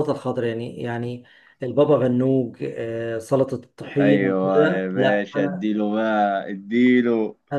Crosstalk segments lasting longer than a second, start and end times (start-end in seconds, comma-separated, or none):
4.0-5.7